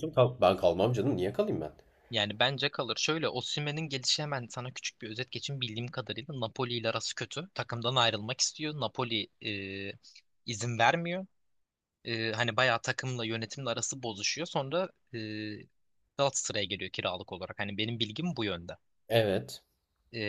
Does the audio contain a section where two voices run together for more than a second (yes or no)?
no